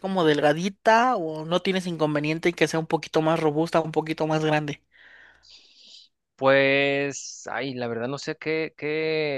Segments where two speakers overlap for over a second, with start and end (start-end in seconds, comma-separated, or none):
none